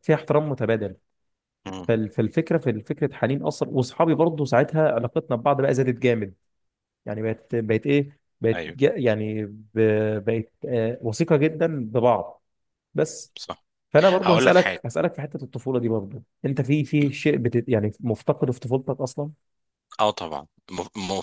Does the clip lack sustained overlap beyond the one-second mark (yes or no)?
yes